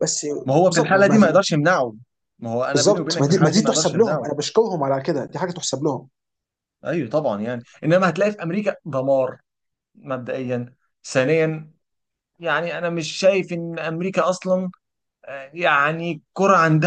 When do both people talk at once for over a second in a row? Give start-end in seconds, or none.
2.7-4.3